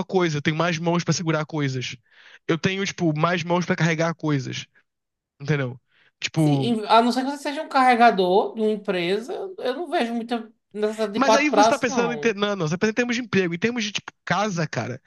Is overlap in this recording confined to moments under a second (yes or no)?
no